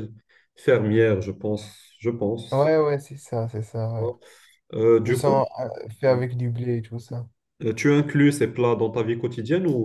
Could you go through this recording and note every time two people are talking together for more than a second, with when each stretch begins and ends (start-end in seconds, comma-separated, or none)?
none